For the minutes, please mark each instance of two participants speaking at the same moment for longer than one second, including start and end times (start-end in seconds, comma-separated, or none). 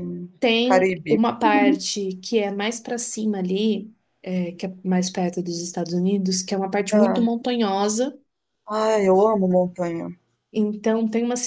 none